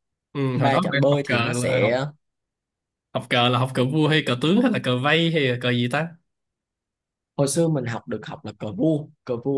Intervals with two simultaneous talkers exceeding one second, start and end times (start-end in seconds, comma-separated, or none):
0.5-1.9